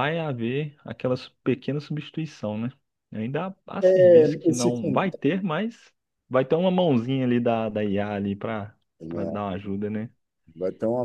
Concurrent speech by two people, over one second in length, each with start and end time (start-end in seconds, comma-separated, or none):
3.8-5.2